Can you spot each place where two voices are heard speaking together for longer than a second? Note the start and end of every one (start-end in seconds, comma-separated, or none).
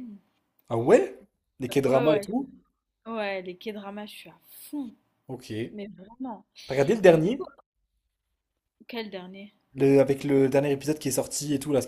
none